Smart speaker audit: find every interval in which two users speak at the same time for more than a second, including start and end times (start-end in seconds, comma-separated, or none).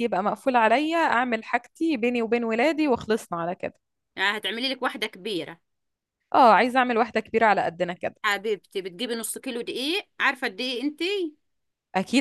none